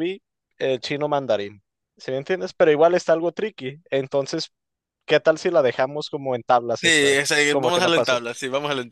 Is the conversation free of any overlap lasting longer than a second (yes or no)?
no